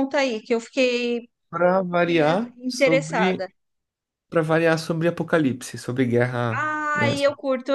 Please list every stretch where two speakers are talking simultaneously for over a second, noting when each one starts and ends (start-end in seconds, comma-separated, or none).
1.9-3.5